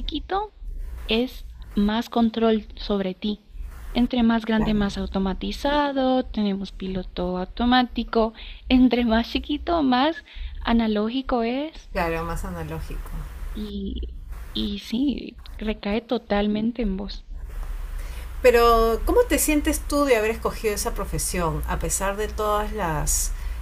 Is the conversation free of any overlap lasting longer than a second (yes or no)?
yes